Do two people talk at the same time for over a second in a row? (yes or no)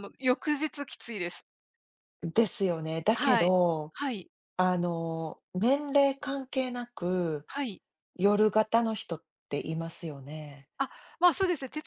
no